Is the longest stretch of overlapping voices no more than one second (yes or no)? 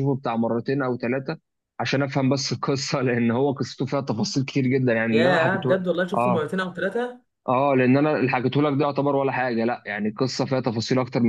no